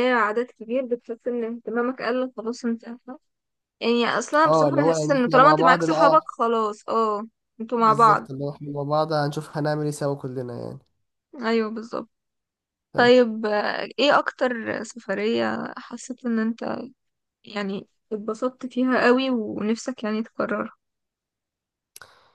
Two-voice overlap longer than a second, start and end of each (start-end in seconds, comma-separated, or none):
4.4-6.2